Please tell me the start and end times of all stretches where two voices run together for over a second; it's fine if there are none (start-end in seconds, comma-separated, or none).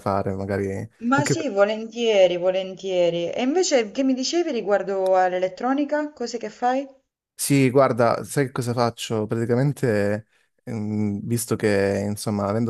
none